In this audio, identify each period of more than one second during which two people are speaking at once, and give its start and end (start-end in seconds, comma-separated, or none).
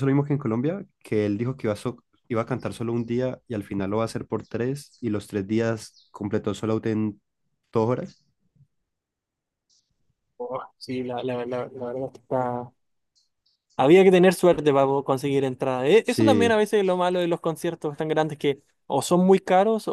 none